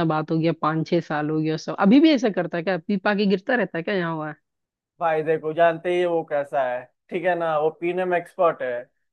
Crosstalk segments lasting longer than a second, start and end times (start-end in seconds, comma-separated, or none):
none